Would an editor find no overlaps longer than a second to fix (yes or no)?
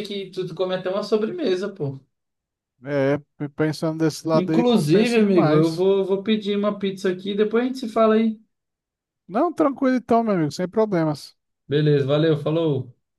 no